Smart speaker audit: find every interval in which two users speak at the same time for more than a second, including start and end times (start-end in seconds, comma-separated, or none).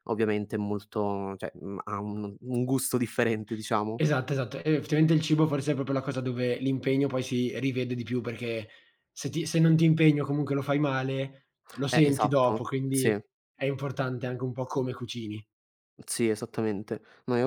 11.9-13.2